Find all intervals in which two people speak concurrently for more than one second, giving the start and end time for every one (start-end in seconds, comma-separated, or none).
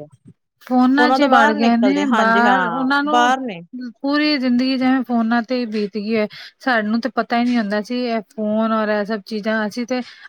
1.2-3.3